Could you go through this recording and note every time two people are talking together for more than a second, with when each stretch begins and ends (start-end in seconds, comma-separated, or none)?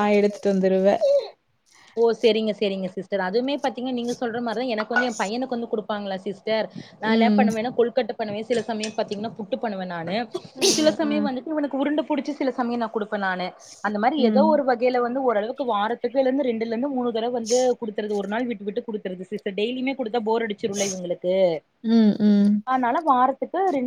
none